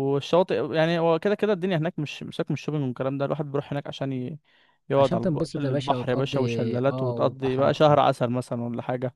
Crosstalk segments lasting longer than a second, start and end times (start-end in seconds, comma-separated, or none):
5.0-7.8